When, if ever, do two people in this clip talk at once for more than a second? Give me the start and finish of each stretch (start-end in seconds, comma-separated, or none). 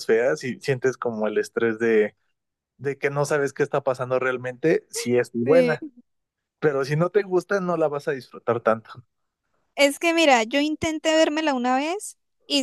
none